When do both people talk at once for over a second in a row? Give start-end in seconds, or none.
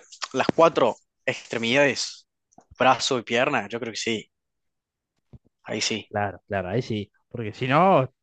none